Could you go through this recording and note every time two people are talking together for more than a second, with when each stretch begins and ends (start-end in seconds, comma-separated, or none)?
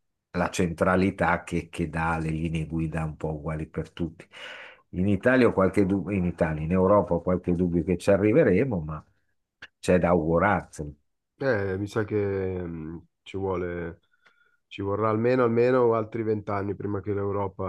none